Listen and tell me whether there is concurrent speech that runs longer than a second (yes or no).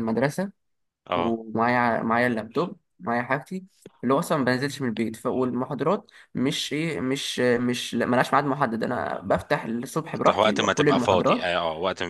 yes